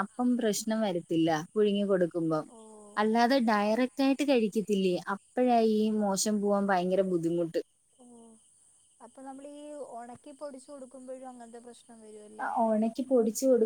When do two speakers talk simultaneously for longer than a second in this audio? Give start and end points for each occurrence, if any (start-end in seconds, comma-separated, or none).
none